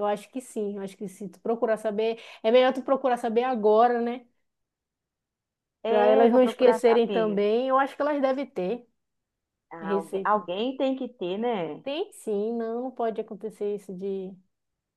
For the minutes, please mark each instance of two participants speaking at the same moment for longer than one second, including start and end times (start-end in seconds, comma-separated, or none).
5.8-7.4